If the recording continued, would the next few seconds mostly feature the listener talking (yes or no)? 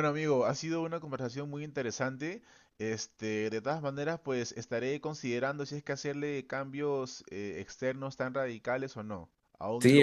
yes